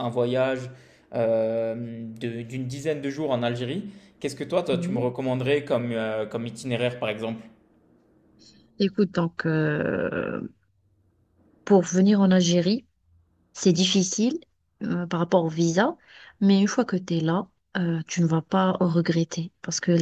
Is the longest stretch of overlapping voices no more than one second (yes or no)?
yes